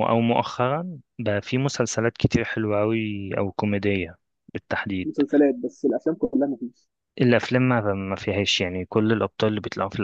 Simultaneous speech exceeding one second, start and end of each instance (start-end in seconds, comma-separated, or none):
none